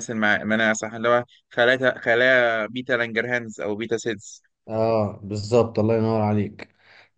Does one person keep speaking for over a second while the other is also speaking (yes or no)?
no